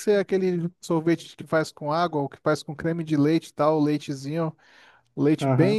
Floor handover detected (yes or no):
no